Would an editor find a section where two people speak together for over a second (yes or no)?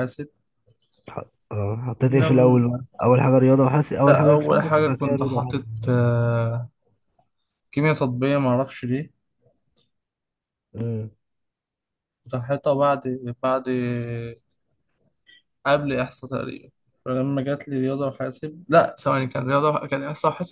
yes